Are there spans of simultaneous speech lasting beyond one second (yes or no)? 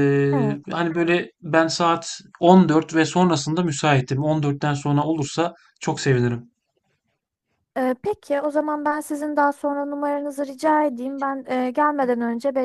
no